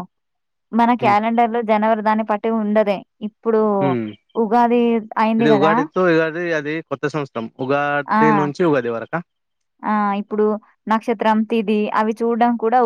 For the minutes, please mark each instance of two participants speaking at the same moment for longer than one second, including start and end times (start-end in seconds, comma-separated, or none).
none